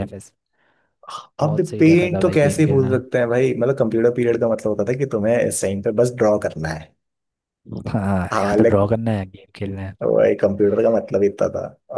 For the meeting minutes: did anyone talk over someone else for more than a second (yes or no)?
yes